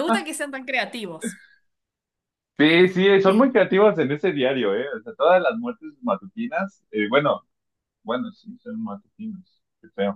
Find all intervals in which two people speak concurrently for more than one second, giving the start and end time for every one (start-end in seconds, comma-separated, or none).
none